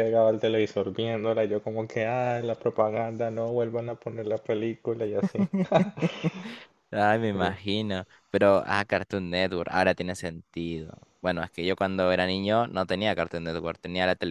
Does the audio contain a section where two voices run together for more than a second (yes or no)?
no